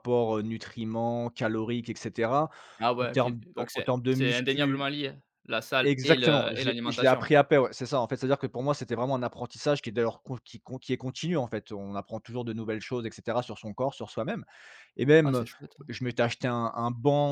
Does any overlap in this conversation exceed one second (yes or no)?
yes